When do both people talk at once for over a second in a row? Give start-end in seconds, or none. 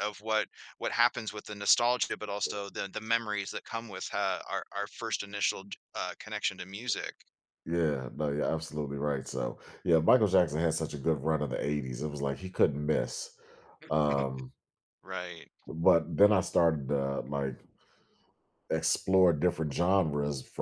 none